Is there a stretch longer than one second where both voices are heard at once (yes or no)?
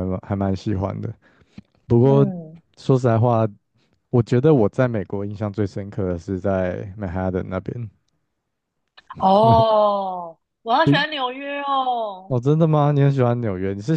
no